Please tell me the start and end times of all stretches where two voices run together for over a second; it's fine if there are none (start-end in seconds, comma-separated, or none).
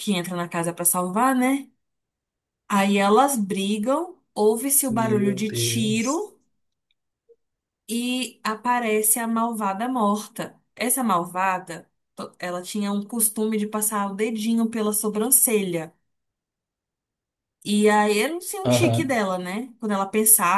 4.9-6.3